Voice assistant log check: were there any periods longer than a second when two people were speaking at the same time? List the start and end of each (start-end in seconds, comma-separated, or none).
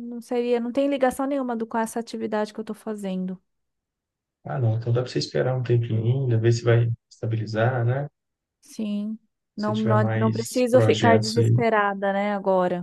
9.6-11.6